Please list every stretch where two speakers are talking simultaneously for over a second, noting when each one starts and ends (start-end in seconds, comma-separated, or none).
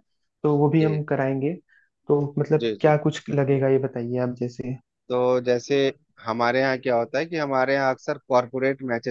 none